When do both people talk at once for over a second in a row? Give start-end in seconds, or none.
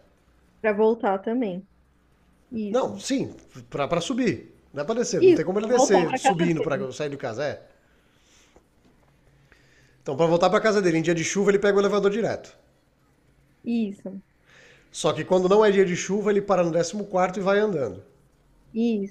5.2-6.9